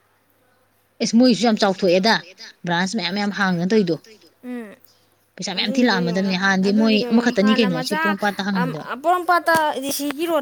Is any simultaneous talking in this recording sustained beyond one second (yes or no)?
yes